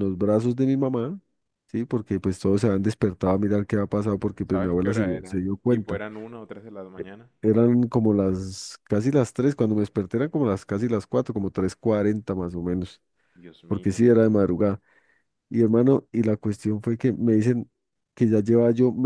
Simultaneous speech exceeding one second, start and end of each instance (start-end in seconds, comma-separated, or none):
4.5-6.0